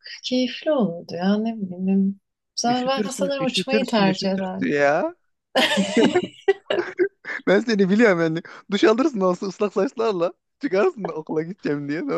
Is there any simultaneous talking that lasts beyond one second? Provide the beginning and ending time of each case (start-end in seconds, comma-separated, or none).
2.7-4.7